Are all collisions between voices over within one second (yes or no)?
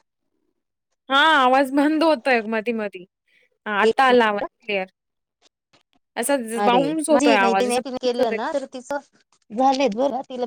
no